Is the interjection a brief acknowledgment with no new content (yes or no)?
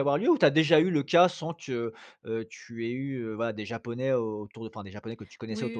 no